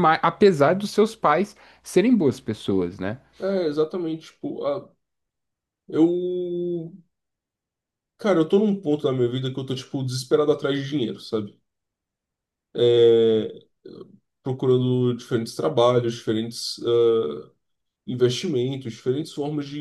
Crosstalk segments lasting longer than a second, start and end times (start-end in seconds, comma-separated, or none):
none